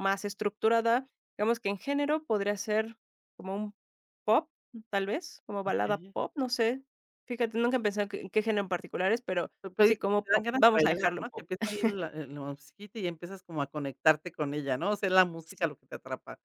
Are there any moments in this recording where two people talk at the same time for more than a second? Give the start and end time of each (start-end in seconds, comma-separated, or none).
9.6-11.4